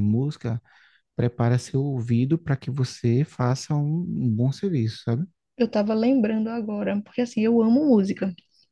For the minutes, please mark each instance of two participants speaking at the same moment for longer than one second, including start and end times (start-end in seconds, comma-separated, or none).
none